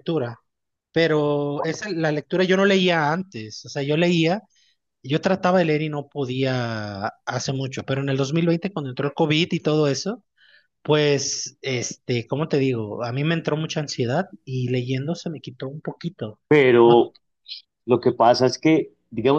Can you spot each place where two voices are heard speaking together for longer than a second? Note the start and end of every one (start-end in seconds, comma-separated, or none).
none